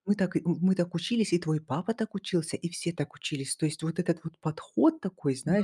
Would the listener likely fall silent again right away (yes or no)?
yes